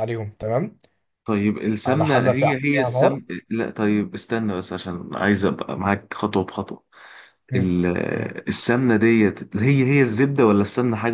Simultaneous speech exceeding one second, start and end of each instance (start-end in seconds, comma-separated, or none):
1.9-3.2